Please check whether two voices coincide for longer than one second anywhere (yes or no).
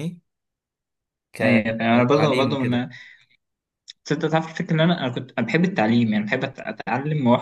yes